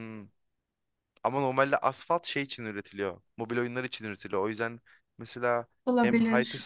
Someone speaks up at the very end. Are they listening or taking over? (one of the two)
listening